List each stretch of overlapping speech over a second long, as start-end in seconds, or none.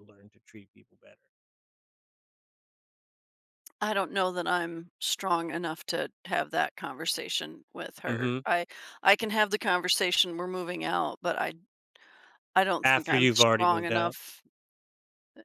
12.8-14.2